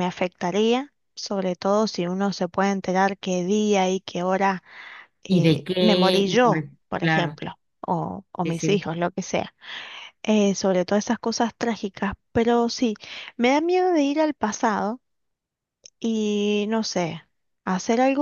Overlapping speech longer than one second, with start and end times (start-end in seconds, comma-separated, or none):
5.3-7.4